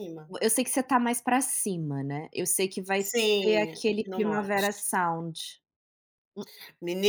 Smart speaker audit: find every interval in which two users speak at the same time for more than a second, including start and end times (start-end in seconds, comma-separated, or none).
3.0-4.9